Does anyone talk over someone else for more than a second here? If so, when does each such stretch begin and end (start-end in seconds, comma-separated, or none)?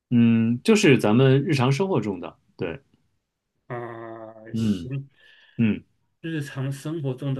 none